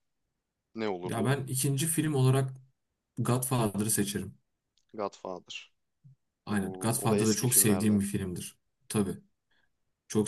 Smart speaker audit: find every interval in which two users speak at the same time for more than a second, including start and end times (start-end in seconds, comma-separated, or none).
6.5-8.0